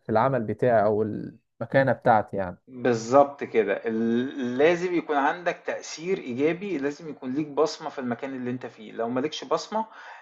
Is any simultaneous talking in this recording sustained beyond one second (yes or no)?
no